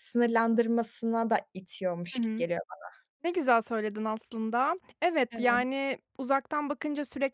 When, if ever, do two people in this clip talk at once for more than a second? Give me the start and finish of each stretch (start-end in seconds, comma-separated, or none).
none